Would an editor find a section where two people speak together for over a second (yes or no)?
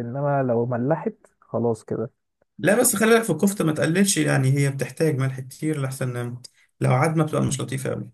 no